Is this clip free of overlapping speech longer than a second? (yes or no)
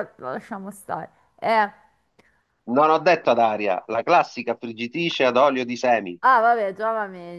yes